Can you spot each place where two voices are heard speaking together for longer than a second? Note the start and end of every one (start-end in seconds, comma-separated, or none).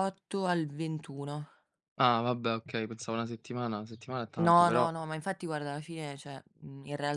none